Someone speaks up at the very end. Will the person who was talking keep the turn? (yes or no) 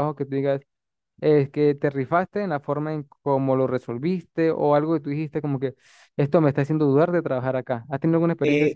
no